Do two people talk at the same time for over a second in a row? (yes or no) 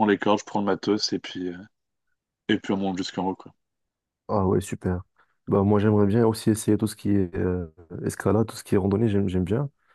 no